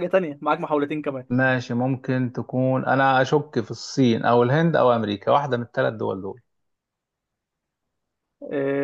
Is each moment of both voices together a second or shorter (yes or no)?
yes